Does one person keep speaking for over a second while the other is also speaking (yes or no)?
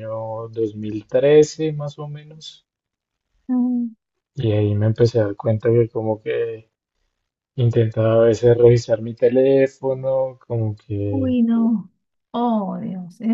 no